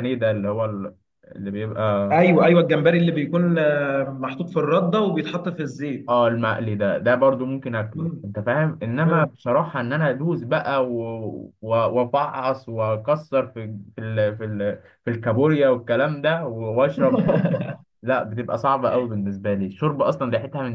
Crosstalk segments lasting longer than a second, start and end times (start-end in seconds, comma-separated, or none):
none